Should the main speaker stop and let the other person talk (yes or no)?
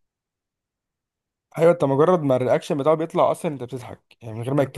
no